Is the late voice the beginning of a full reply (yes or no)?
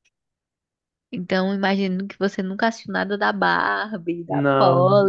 no